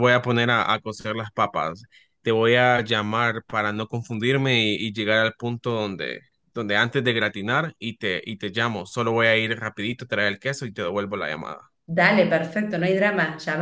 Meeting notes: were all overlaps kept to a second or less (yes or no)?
yes